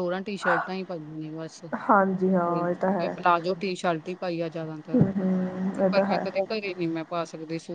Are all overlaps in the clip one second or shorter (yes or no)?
no